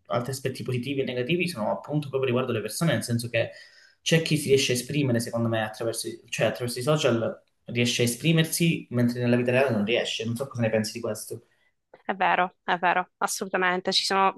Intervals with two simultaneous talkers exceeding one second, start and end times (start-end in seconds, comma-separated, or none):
none